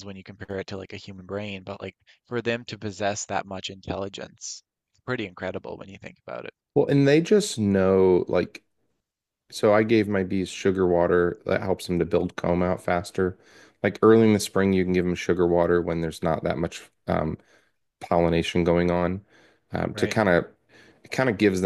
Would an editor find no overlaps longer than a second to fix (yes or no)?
yes